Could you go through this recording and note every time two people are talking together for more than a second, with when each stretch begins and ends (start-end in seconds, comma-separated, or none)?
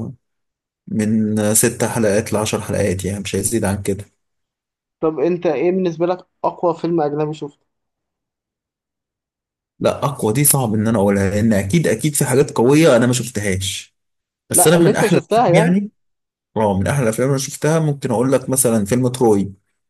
14.5-15.7